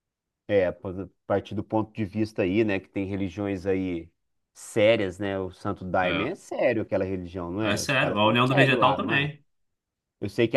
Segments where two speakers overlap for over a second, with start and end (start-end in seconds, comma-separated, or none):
7.6-9.3